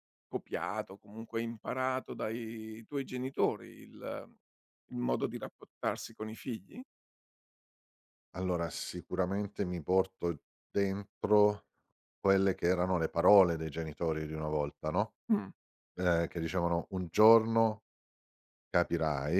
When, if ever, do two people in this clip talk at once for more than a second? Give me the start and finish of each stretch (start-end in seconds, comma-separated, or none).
none